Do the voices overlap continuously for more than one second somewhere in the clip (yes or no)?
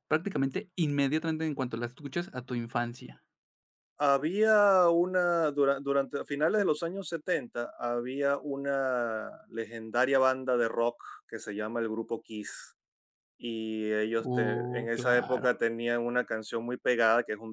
yes